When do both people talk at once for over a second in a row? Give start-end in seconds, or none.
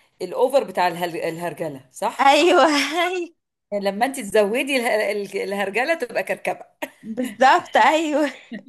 none